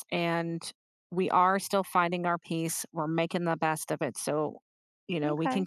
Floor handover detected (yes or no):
yes